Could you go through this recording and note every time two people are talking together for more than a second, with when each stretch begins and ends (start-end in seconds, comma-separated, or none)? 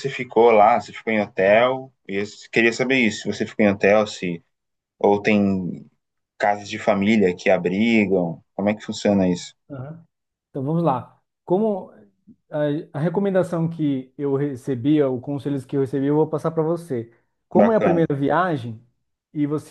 none